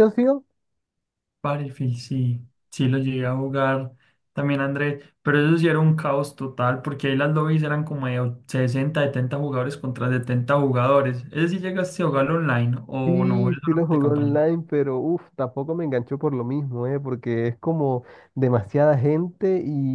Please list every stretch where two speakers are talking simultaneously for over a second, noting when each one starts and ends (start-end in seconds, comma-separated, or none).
13.1-14.4